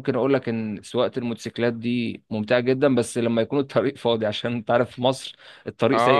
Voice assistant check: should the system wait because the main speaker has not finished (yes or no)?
no